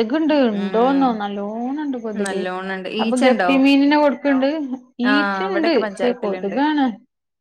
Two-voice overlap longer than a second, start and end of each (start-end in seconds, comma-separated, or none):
5.1-6.5